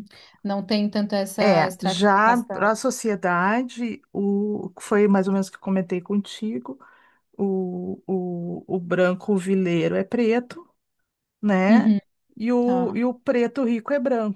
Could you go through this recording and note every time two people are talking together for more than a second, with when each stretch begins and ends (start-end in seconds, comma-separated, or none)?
1.4-2.7